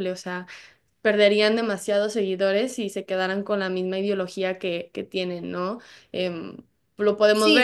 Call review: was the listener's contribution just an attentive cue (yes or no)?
no